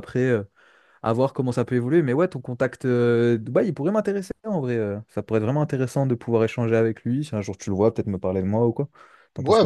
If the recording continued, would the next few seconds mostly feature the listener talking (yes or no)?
yes